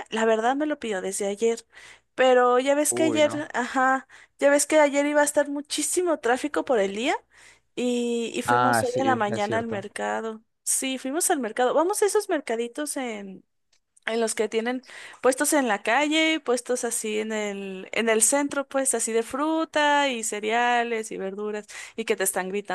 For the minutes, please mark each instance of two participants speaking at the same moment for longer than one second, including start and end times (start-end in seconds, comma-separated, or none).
8.5-9.8